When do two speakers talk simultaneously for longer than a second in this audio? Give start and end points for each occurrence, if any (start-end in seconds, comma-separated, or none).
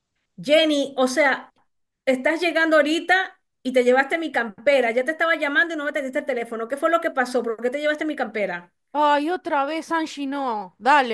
none